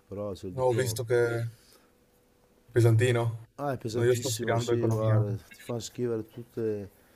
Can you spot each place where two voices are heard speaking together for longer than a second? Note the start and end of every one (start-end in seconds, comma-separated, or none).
3.9-5.2